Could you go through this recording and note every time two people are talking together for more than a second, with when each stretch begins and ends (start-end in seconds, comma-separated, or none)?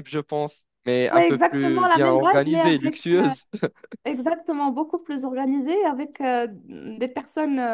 1.1-3.0